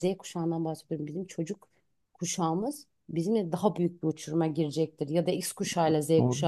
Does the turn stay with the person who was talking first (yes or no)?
no